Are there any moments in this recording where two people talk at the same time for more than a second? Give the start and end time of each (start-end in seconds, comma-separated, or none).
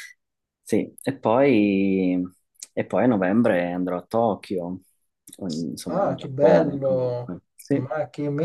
5.9-7.8